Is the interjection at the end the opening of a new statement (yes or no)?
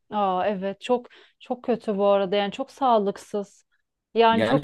yes